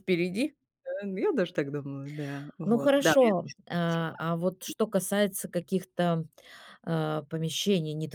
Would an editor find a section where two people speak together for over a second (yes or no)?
yes